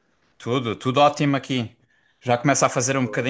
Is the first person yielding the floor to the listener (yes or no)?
no